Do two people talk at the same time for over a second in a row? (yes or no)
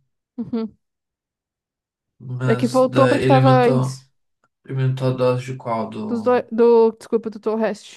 yes